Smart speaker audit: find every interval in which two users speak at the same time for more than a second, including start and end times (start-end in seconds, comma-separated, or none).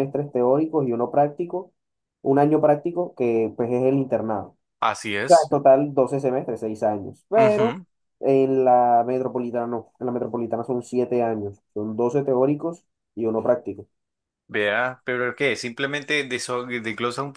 none